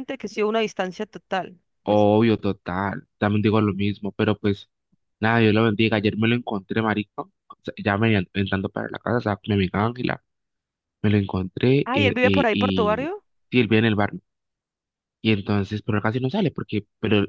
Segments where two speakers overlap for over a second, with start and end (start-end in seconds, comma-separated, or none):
11.8-13.1